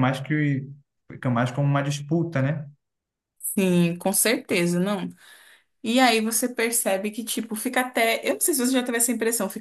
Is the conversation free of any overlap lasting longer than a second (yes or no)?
yes